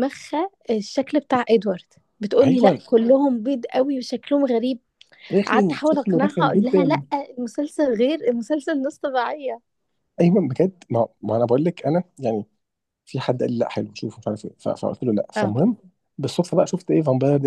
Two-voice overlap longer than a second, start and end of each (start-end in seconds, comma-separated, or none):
5.5-7.0